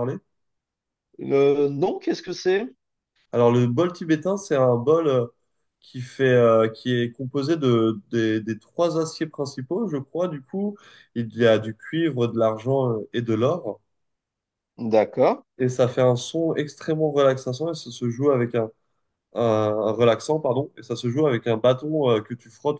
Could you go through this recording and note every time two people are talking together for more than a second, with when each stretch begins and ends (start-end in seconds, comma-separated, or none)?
none